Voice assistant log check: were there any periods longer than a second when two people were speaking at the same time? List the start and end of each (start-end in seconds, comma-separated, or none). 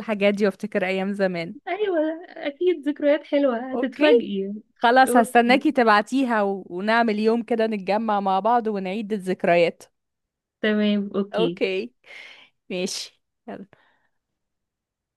none